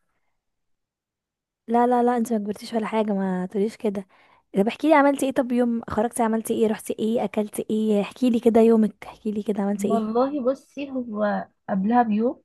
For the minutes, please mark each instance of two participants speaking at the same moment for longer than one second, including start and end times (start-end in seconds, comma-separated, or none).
none